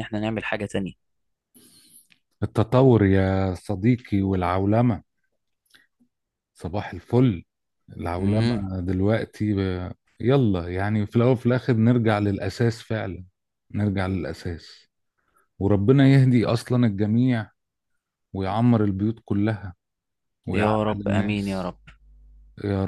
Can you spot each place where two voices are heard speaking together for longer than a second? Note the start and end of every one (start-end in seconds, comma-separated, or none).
20.5-21.7